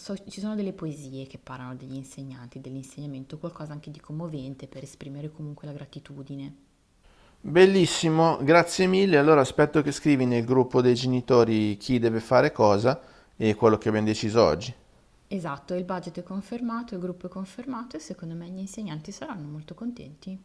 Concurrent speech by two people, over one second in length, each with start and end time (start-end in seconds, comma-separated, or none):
none